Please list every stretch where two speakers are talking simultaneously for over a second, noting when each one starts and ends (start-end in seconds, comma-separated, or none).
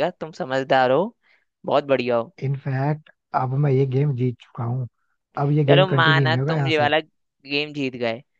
5.7-6.9